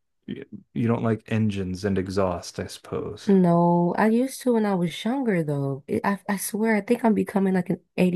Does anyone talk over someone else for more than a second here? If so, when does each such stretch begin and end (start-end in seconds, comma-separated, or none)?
none